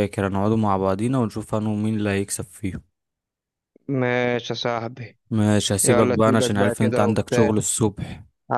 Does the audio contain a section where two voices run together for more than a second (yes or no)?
yes